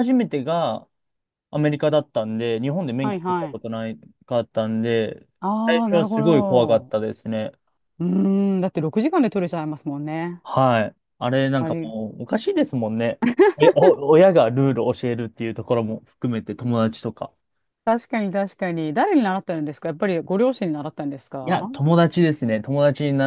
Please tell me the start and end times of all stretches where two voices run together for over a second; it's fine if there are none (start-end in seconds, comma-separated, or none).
5.7-7.0